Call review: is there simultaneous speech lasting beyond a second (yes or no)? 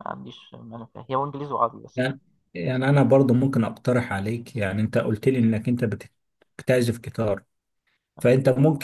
no